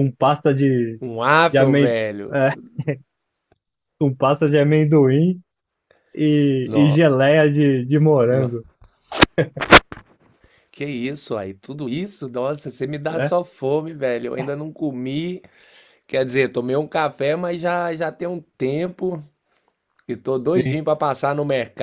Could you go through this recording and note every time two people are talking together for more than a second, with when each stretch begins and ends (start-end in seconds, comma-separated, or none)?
none